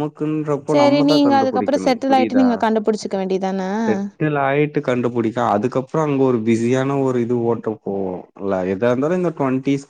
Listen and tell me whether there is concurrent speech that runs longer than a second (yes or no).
yes